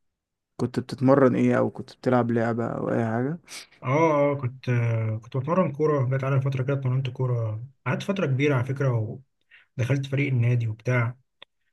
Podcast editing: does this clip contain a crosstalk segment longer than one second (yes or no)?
no